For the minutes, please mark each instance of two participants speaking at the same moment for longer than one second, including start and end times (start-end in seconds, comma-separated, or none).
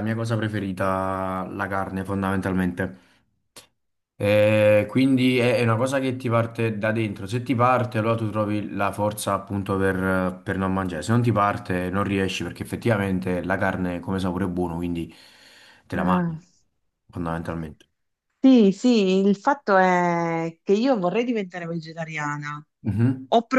none